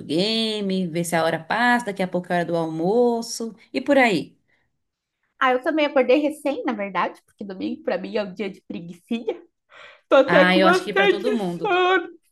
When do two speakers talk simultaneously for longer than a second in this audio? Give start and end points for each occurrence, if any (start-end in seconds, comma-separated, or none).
10.2-11.8